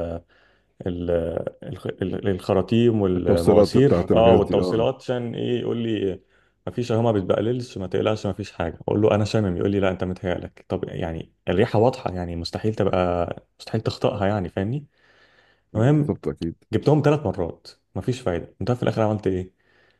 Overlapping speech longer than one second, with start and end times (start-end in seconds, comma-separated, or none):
3.2-4.9